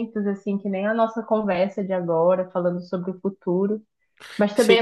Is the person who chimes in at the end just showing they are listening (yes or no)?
yes